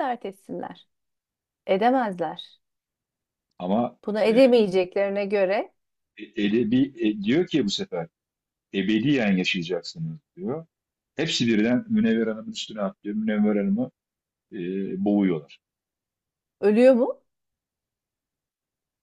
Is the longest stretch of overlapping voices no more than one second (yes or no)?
yes